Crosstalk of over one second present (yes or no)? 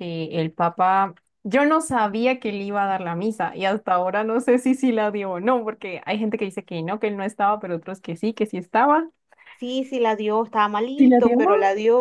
no